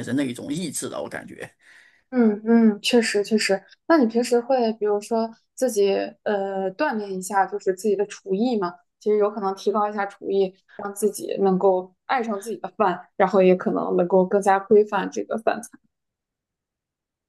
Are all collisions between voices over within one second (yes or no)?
yes